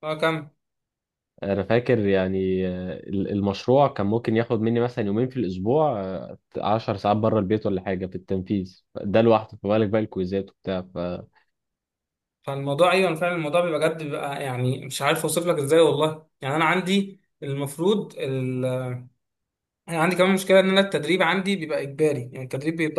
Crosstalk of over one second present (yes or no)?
no